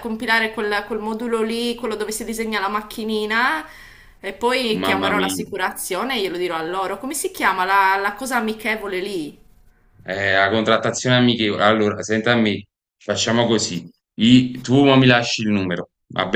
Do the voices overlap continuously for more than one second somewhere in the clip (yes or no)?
no